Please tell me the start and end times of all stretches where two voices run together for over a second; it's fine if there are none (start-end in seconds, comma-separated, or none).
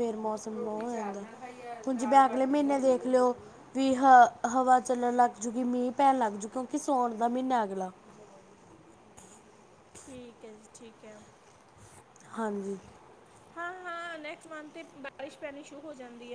none